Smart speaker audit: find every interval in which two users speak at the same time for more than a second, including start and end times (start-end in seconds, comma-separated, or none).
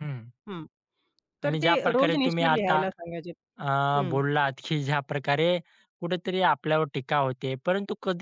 1.4-2.8